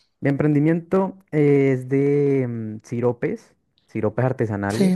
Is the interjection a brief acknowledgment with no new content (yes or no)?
yes